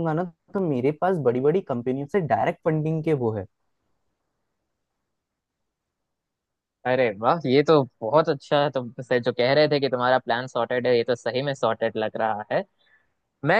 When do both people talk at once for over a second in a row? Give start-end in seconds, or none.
none